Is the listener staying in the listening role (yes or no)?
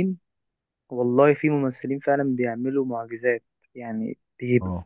yes